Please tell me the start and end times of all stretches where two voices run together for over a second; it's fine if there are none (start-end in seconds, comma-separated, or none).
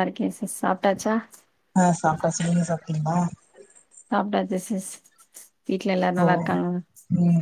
none